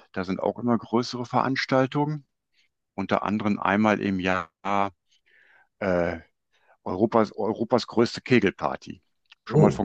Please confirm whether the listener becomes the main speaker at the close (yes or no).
yes